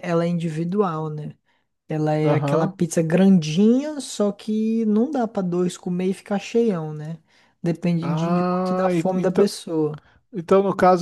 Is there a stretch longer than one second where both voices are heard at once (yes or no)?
yes